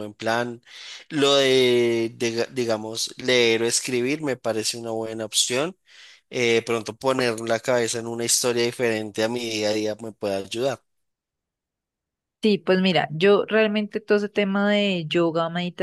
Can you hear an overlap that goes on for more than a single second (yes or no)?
no